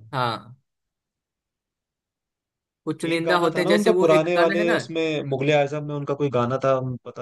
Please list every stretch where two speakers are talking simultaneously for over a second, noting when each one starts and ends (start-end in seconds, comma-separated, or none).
3.1-4.8